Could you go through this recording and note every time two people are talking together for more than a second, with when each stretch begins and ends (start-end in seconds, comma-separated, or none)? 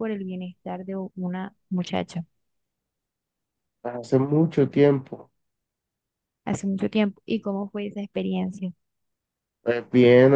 none